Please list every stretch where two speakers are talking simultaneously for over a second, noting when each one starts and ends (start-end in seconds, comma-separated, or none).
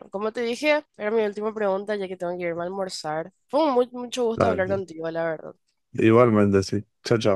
none